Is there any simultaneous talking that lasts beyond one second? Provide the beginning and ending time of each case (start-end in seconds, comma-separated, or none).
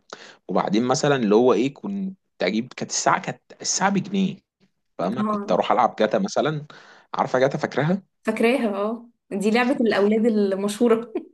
none